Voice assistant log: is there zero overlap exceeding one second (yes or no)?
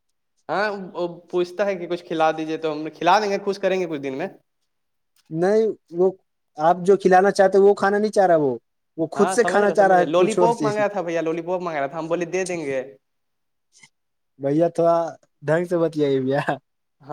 no